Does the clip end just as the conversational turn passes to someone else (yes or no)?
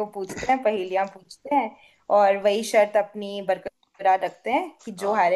no